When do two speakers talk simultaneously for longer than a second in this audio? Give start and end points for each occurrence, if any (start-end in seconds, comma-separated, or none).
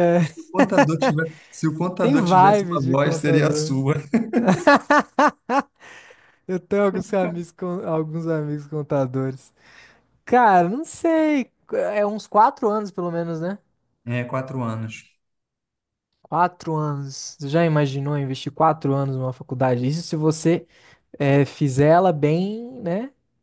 2.0-3.7